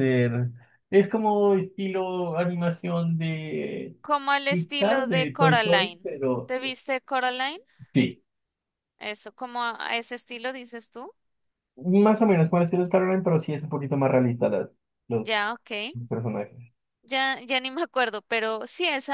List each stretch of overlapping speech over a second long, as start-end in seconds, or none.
4.5-6.5